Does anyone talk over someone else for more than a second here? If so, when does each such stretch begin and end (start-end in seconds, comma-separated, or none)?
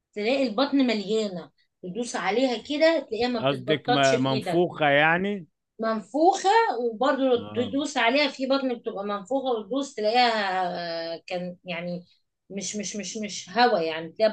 3.4-4.6